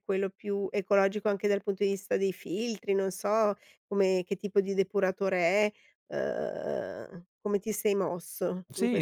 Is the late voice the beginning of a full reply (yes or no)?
yes